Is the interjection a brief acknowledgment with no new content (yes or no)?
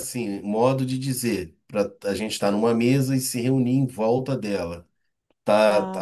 yes